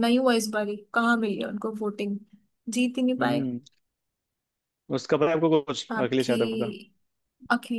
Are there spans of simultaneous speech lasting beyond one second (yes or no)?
no